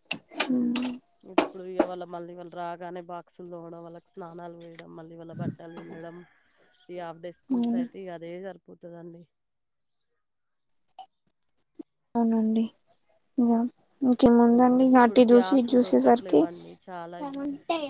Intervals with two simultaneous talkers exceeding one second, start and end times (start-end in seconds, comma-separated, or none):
14.6-16.4